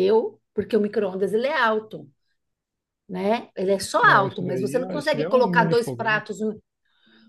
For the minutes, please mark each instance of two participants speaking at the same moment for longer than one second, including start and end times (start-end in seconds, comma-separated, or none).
4.0-6.2